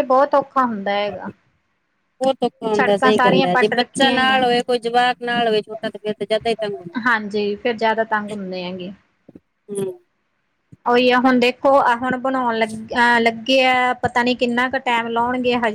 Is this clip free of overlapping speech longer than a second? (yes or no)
no